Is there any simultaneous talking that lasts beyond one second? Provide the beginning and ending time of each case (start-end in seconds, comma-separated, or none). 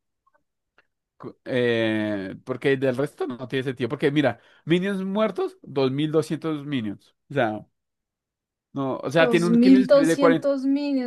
9.2-10.5